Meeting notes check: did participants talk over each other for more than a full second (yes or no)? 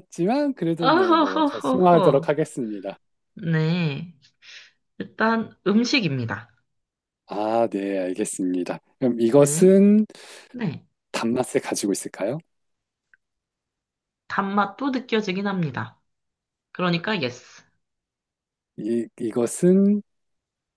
yes